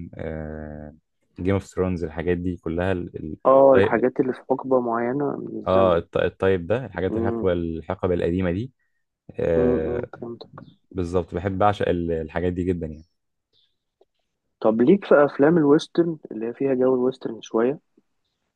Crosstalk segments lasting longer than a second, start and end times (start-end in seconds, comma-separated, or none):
none